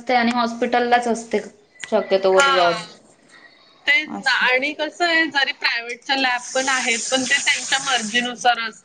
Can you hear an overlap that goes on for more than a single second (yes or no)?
no